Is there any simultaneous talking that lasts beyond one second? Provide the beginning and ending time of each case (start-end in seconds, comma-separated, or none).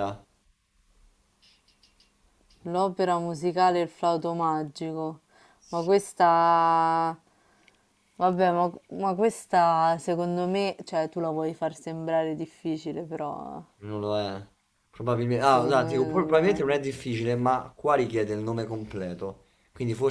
15.4-16.7